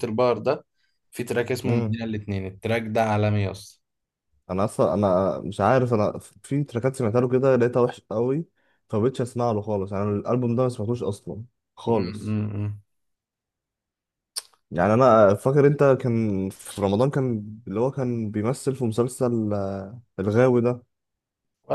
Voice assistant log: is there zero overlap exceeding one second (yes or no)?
yes